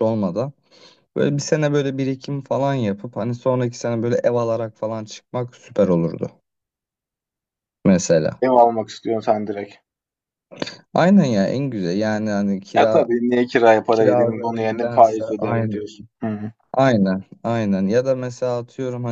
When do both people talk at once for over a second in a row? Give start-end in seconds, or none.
13.9-15.8